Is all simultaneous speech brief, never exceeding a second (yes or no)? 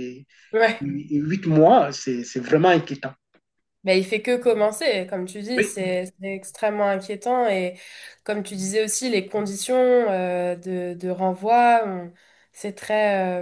yes